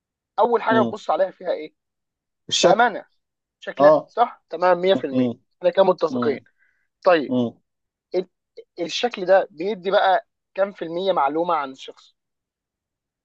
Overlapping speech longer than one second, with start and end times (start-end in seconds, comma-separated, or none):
none